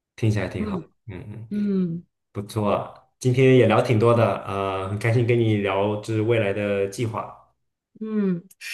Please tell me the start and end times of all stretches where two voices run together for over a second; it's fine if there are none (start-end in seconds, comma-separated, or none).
none